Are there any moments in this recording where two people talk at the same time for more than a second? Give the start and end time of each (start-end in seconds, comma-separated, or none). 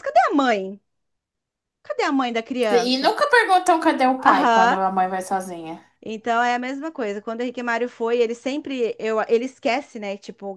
none